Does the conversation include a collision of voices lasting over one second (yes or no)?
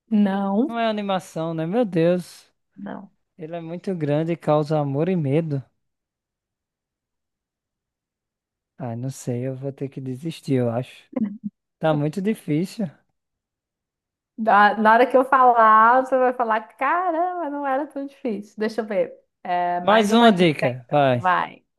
yes